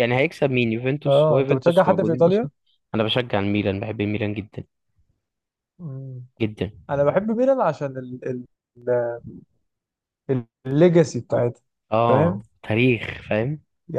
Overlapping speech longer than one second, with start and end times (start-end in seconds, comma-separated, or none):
1.1-2.5